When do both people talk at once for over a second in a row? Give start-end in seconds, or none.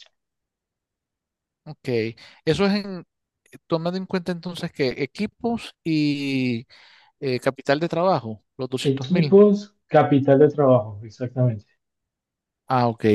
none